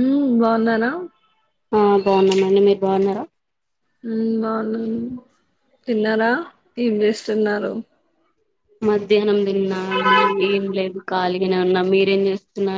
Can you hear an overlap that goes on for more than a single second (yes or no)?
no